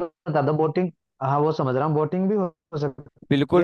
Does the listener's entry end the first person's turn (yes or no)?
yes